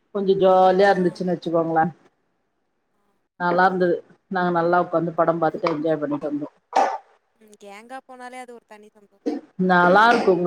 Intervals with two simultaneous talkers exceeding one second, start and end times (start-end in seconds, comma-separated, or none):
none